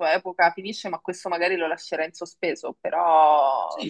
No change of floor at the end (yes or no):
no